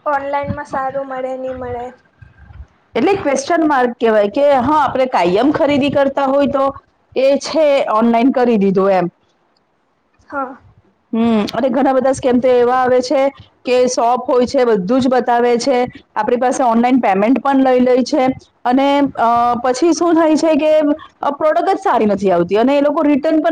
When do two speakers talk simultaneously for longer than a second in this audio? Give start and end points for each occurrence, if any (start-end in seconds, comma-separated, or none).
none